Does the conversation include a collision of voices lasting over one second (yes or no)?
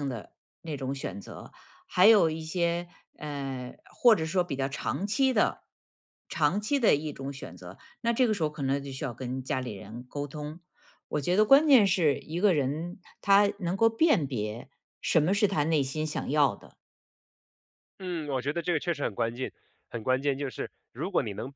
no